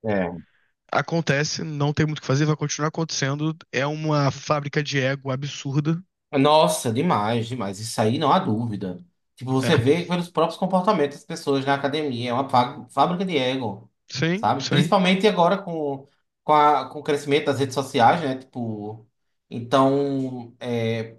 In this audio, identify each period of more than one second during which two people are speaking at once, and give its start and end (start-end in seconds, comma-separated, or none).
none